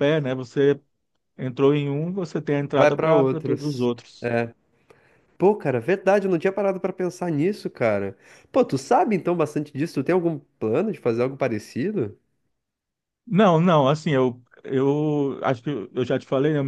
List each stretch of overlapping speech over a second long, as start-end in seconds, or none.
2.7-4.3